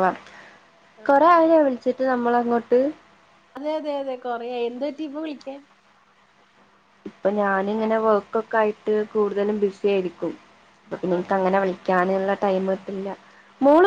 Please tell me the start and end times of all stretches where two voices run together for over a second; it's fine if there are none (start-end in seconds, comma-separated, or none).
none